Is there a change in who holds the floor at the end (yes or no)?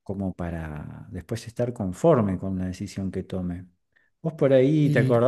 no